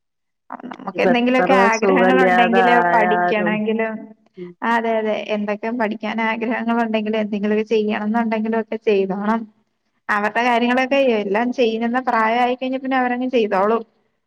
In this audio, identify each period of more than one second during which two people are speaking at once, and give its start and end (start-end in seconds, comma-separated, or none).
1.0-3.5